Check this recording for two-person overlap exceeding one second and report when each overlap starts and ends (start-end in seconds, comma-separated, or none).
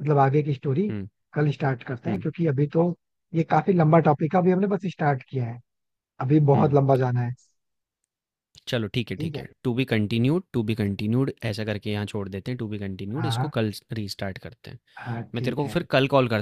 none